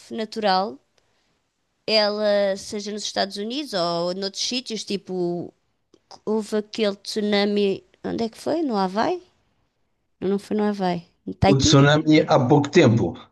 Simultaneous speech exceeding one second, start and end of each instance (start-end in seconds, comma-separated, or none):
none